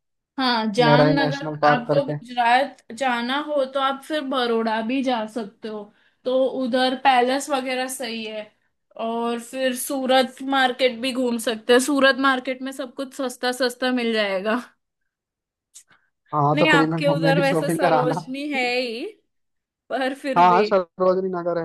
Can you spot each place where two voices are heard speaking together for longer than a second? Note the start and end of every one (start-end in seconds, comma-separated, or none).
0.8-2.2, 16.5-18.1